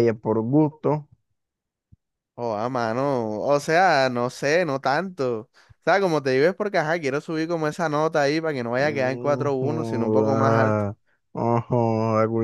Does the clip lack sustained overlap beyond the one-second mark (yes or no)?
no